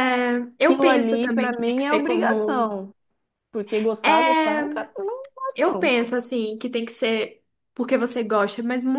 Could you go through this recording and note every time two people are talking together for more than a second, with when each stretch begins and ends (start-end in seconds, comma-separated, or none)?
0.6-2.7